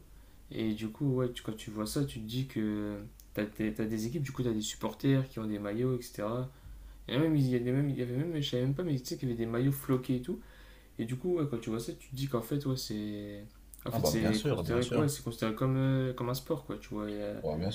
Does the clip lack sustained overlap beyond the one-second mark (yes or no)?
no